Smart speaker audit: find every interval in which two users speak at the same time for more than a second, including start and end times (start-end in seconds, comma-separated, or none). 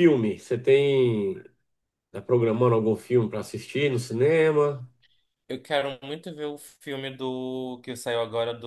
none